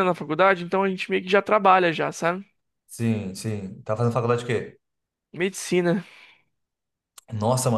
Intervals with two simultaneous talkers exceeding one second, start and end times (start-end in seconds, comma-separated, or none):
none